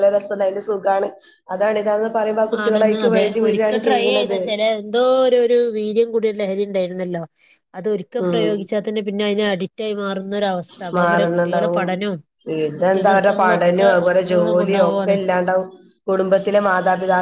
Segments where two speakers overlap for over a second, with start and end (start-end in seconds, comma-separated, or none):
12.8-15.1